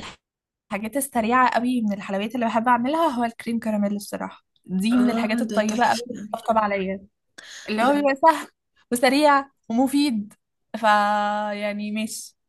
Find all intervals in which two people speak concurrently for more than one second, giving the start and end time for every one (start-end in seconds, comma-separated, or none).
5.0-6.3